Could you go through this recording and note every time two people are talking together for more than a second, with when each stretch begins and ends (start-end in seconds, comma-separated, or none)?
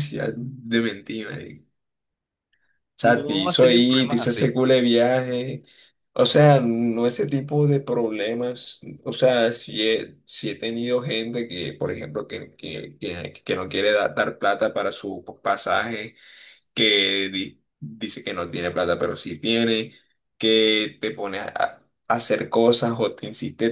3.0-4.5